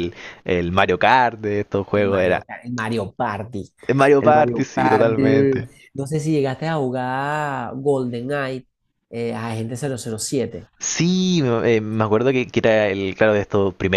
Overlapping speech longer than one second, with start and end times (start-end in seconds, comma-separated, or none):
4.2-5.7